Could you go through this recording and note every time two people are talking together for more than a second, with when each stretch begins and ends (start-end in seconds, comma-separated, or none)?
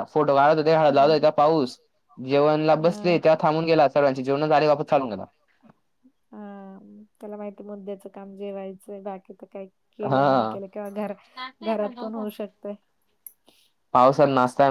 none